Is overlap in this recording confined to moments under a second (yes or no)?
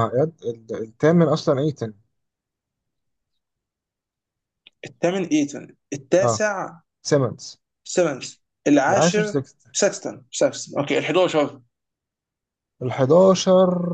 yes